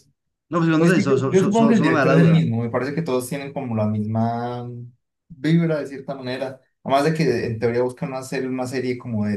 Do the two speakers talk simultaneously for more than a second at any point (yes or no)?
yes